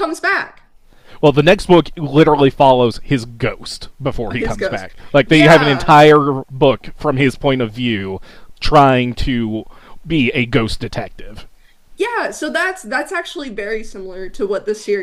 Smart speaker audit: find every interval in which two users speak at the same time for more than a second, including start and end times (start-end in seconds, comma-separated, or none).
4.4-6.0